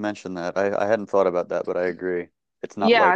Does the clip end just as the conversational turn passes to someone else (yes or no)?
yes